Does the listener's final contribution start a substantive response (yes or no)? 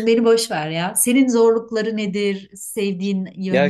yes